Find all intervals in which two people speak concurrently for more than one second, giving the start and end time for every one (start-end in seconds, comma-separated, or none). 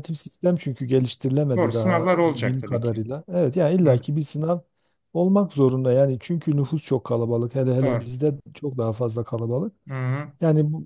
1.6-3.0